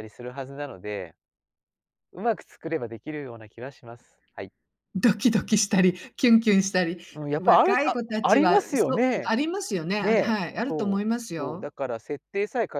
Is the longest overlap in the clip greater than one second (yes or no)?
yes